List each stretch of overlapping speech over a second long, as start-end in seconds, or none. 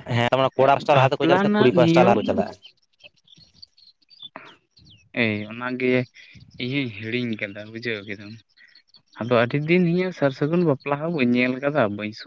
0.9-2.2